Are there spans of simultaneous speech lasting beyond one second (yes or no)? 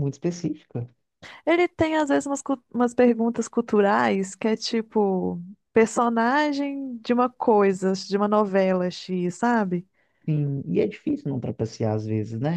no